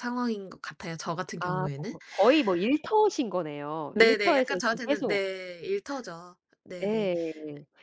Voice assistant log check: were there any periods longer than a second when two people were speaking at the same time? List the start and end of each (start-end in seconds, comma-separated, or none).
3.9-5.2